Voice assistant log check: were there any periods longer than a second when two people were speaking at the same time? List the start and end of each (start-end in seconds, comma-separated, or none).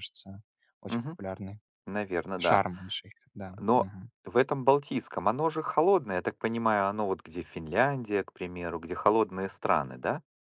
none